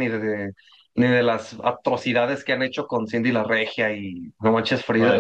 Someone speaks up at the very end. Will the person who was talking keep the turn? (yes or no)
yes